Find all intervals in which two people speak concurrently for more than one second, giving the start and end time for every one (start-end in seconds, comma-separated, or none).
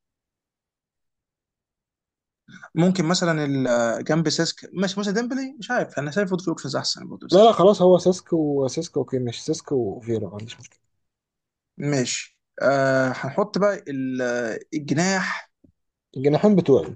none